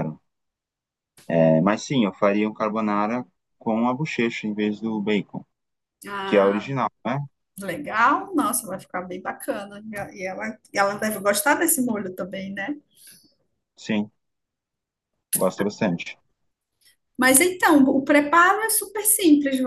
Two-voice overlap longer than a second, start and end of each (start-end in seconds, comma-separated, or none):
none